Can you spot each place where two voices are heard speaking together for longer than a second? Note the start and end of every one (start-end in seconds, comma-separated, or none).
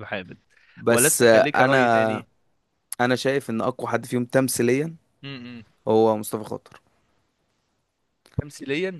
0.9-2.2